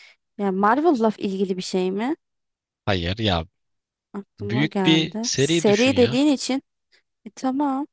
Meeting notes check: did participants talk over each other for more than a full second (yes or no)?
yes